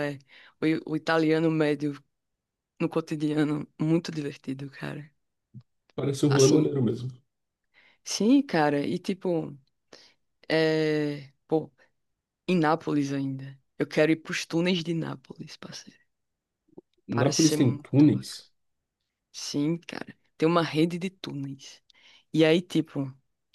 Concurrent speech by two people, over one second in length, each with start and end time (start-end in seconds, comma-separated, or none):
17.1-18.5